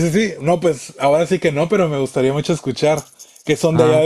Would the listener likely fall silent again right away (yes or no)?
no